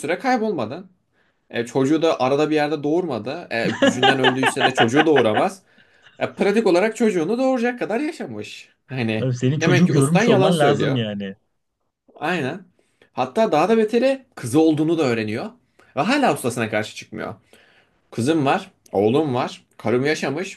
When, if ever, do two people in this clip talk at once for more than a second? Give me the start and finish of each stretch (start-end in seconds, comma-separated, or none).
9.2-11.0